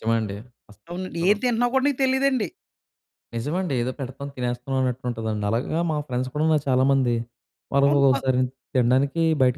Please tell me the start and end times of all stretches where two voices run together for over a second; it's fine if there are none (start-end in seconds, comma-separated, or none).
none